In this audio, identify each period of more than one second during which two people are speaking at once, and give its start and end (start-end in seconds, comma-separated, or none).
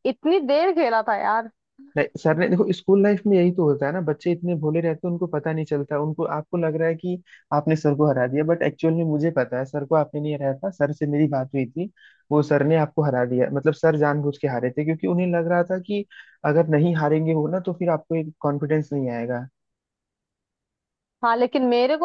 none